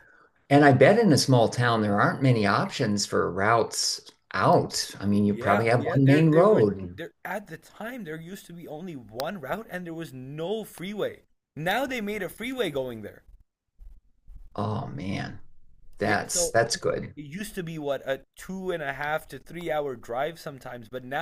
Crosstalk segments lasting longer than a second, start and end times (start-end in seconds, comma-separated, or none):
5.2-7.0